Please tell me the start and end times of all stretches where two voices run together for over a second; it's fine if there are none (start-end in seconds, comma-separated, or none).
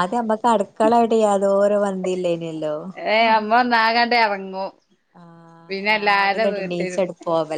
5.7-7.0